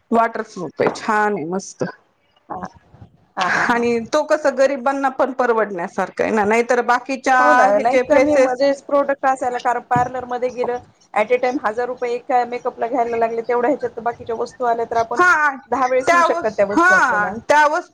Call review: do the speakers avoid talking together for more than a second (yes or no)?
no